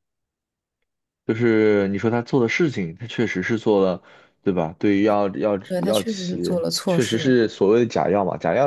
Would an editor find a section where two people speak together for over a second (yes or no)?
yes